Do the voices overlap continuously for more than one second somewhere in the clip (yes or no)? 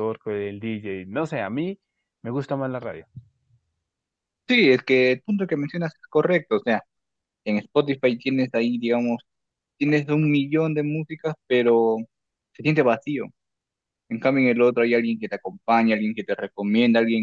no